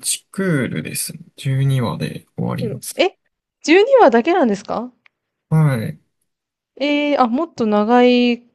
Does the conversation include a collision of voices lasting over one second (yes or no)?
no